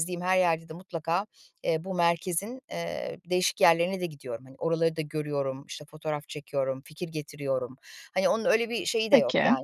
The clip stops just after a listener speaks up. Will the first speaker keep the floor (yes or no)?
yes